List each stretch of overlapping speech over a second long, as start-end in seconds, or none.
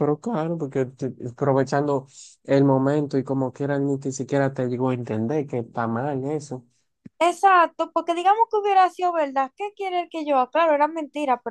none